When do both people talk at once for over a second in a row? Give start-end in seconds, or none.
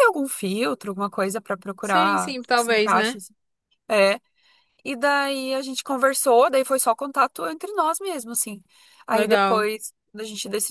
1.8-3.2